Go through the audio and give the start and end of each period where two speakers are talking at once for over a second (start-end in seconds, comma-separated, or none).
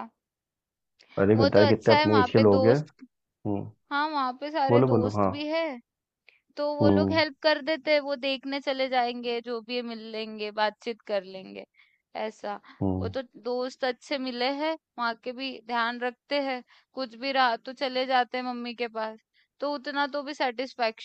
1.4-2.8